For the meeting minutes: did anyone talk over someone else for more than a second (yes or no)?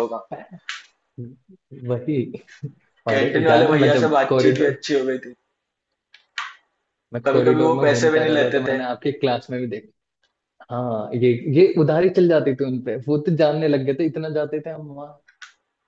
yes